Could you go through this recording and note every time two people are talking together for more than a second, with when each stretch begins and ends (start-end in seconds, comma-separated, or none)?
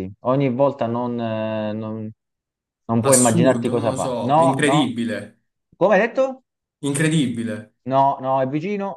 3.0-4.9